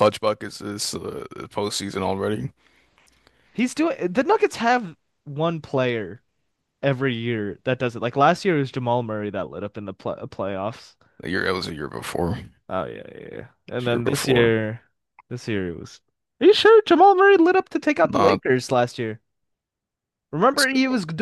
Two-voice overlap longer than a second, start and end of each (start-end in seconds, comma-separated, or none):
none